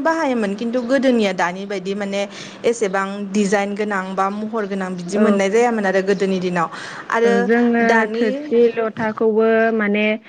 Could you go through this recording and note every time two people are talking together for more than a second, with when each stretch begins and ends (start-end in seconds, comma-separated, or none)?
none